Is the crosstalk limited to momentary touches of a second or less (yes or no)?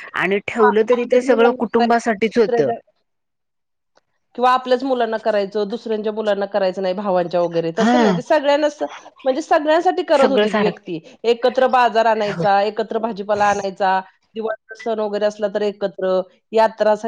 no